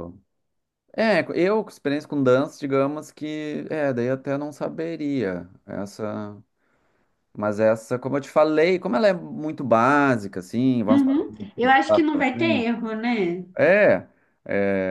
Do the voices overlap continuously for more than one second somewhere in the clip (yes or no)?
yes